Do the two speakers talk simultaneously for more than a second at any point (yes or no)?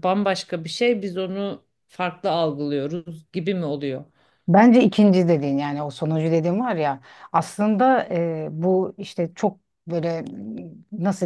no